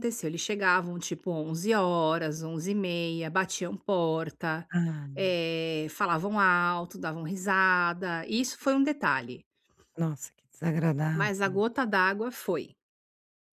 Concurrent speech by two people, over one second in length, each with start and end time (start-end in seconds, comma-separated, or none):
none